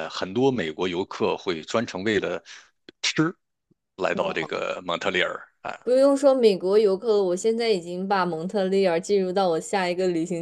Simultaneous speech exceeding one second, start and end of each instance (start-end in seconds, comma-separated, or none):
none